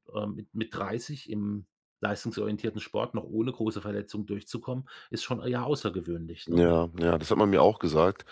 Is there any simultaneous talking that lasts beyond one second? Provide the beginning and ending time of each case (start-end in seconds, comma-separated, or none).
none